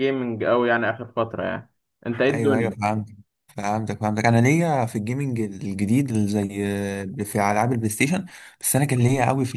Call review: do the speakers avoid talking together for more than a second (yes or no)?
yes